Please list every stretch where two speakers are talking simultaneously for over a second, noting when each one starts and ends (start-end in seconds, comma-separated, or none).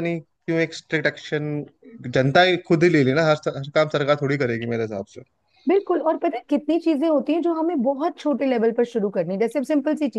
none